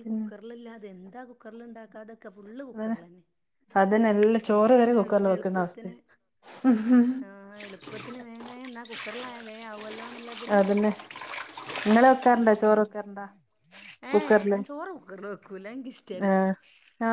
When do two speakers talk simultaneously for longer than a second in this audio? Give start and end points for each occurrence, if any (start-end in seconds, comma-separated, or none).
4.5-5.9